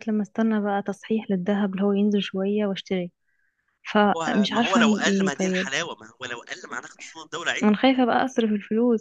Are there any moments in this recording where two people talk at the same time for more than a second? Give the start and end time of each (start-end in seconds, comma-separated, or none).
4.2-5.7